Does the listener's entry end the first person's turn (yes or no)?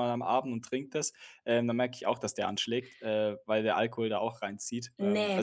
yes